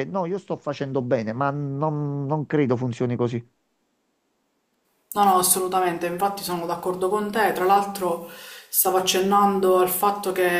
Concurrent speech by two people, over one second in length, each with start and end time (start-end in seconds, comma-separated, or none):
none